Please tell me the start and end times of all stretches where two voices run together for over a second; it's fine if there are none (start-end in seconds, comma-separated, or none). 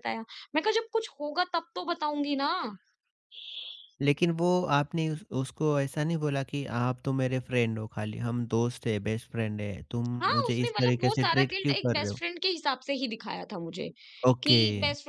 10.2-12.2